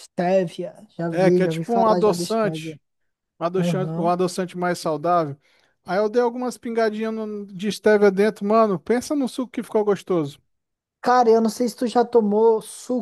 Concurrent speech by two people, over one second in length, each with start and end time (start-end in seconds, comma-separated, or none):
1.1-2.8